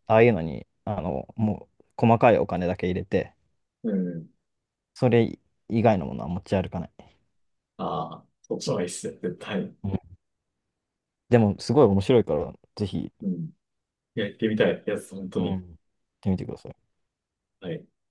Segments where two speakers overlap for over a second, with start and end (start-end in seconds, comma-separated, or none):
none